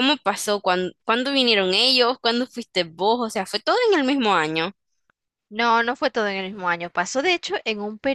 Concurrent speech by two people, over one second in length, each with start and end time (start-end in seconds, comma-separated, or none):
none